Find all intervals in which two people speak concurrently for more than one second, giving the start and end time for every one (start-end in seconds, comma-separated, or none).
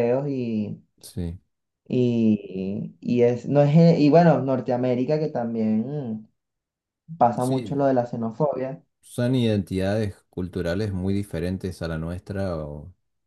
none